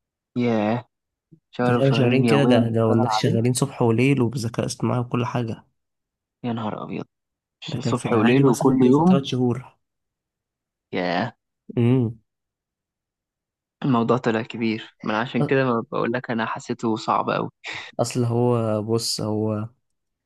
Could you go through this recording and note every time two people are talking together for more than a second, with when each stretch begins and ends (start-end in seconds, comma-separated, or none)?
1.6-3.4, 7.7-9.2